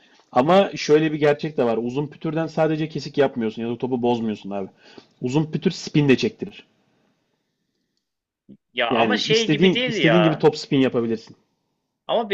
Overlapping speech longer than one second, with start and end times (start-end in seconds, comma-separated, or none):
8.9-10.4